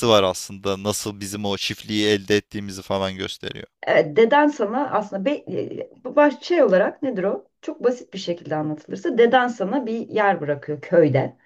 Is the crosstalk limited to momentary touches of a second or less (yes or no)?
yes